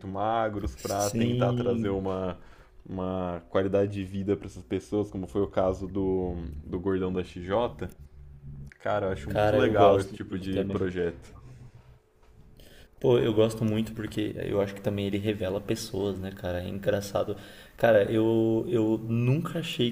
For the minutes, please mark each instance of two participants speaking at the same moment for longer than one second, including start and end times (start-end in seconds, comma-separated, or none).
0.8-2.1, 9.3-10.8